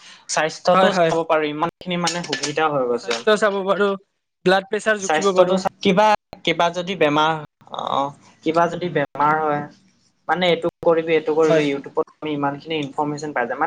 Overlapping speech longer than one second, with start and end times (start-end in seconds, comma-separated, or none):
none